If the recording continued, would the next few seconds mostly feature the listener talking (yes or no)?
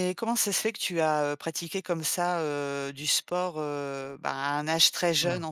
no